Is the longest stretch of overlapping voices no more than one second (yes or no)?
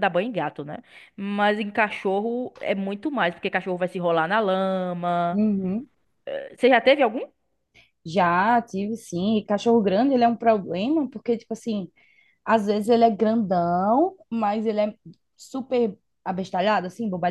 yes